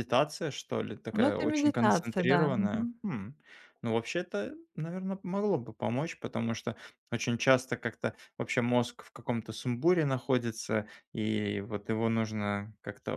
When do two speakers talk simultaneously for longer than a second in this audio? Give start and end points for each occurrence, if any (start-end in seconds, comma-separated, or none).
1.1-2.9